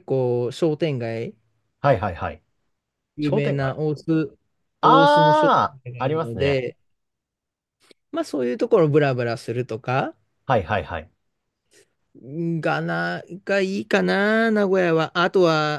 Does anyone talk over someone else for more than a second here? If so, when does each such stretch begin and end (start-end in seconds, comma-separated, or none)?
4.8-6.6